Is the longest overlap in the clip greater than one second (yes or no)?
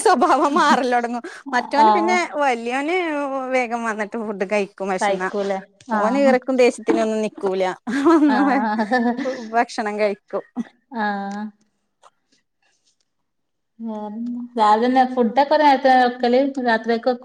no